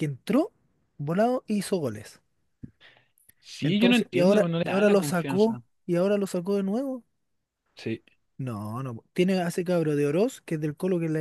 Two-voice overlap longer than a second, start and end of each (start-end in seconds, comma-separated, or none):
3.6-5.6